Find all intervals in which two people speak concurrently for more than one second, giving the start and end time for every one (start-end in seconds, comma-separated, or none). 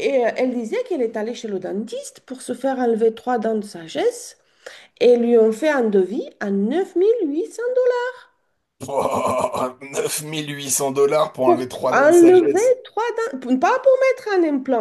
11.4-12.7